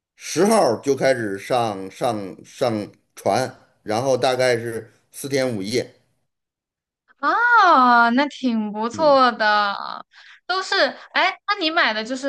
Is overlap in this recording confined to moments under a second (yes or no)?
yes